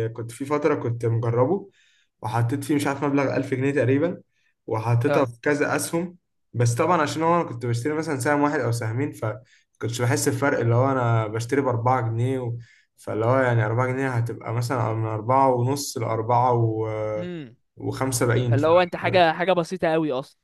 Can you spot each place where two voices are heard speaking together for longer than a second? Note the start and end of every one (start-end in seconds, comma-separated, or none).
none